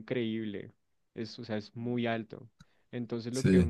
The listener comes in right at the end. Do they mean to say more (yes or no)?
no